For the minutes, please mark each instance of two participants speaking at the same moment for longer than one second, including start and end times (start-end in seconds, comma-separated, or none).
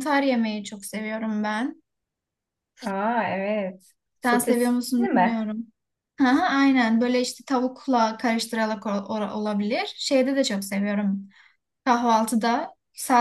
4.2-5.4